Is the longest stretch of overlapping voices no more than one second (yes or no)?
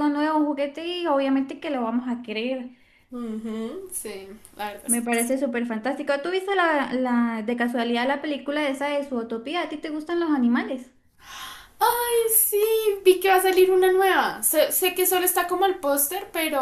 yes